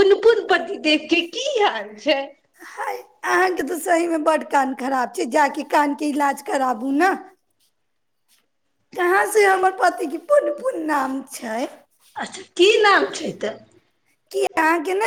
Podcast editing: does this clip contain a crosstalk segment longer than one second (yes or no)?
no